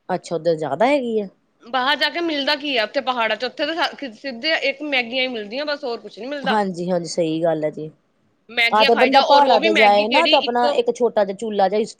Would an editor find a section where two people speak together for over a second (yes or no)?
yes